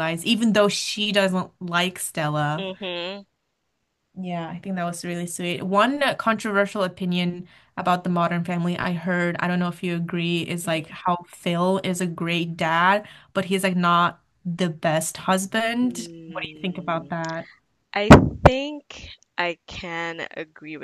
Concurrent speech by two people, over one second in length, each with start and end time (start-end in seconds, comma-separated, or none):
15.8-17.1